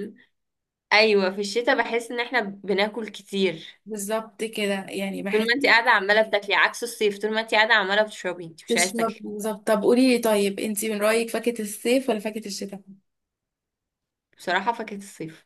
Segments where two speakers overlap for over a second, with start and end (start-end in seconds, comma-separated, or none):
none